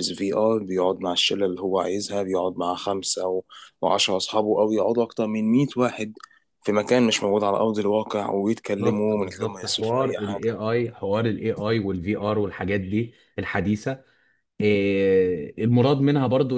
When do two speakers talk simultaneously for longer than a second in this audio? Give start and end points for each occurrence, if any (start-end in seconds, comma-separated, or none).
8.8-10.6